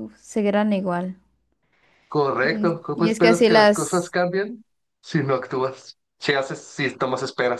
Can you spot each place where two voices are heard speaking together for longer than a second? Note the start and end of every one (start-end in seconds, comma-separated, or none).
2.4-4.2